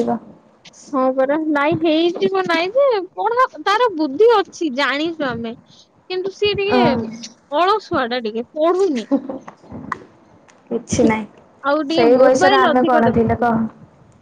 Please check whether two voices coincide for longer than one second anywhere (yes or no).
yes